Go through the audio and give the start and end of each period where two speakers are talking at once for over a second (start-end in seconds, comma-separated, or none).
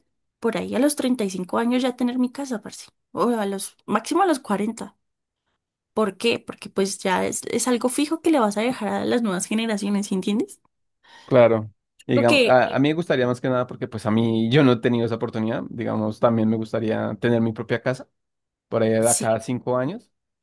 none